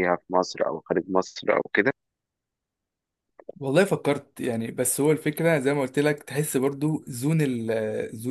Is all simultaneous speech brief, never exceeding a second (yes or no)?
yes